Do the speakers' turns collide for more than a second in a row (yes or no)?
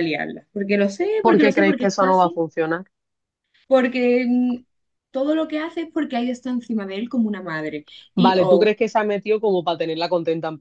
yes